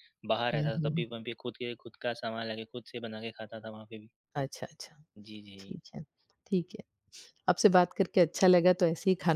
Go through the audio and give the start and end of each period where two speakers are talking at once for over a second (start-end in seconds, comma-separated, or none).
none